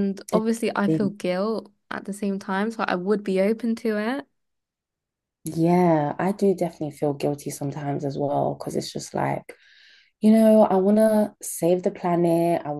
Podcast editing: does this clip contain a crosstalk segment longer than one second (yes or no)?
no